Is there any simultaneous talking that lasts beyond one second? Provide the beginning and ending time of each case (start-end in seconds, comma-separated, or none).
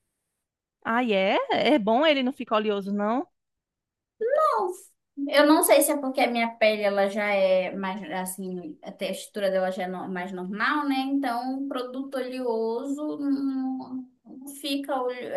none